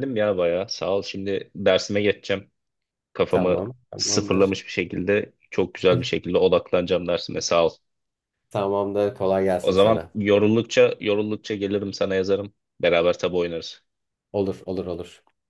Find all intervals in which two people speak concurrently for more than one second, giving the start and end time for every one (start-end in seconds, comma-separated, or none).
3.3-4.6